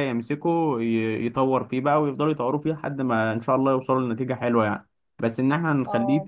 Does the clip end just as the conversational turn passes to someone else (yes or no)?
no